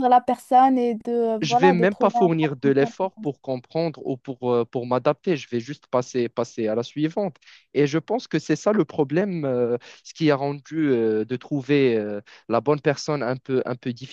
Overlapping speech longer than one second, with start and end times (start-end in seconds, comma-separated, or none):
1.4-2.7